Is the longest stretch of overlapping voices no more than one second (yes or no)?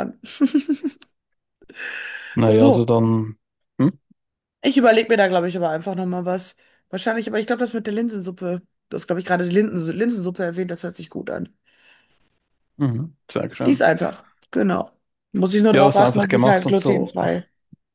no